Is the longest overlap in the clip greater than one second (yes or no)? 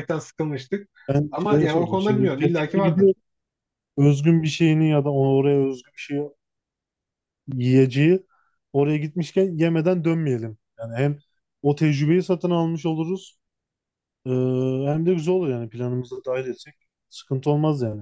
yes